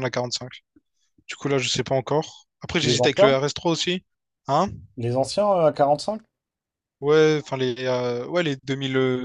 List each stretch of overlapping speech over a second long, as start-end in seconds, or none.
none